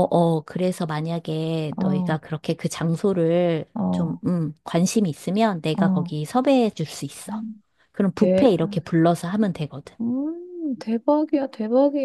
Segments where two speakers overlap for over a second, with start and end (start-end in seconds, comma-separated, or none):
none